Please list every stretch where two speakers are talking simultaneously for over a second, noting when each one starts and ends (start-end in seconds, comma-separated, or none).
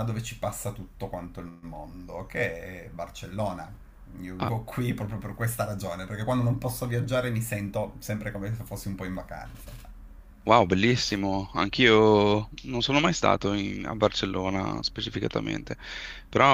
none